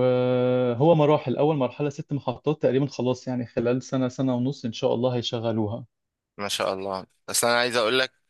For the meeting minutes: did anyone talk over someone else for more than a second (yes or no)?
no